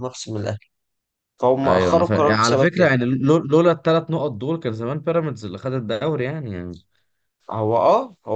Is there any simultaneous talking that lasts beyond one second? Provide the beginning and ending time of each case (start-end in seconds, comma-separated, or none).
1.6-2.9